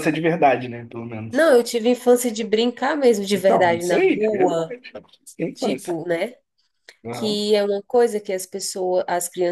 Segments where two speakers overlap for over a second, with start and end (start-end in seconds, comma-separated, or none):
3.3-4.8